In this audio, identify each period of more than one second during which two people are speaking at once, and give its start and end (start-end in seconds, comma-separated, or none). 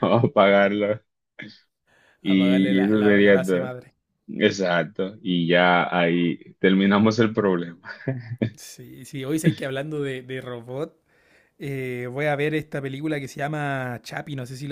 2.2-3.7